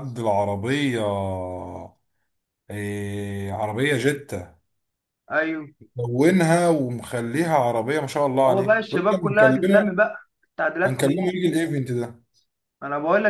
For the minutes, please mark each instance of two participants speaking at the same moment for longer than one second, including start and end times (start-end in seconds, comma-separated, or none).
8.5-9.9